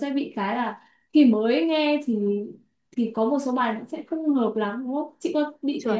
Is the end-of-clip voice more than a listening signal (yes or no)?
yes